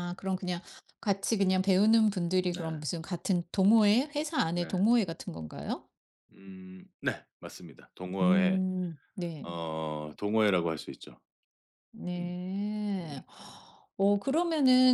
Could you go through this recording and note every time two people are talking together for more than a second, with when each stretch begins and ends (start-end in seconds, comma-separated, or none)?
none